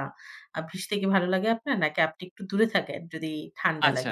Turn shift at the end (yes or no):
yes